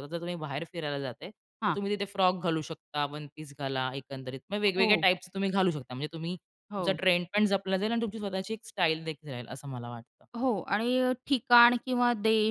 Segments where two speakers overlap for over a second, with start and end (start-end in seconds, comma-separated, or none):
none